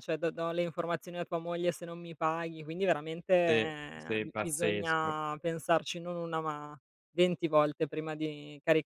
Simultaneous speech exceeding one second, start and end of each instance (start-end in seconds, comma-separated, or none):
3.5-5.2